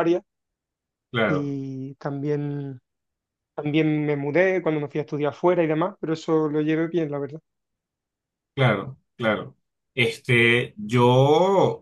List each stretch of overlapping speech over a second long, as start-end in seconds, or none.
none